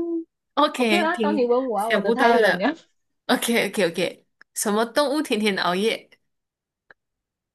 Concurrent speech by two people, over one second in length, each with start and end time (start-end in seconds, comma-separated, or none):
0.8-2.7